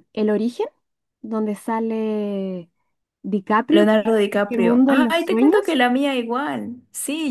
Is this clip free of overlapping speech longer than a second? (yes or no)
no